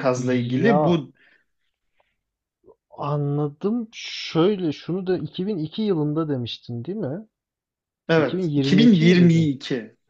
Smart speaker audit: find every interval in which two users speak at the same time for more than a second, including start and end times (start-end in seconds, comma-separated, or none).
8.2-9.5